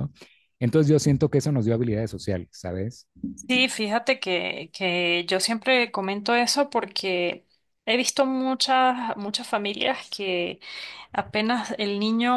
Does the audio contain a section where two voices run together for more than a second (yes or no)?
no